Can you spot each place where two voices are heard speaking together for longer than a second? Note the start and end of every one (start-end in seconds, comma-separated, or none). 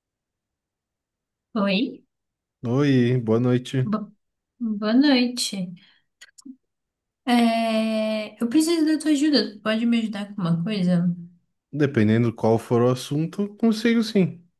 none